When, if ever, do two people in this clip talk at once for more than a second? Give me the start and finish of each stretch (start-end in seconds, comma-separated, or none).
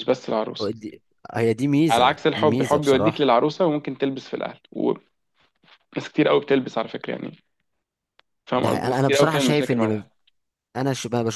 1.9-3.3, 8.6-10.1